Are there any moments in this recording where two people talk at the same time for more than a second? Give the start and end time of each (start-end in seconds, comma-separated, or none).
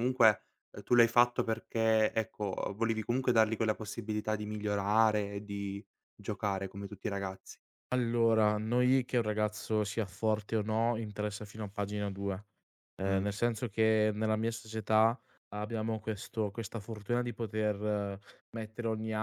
none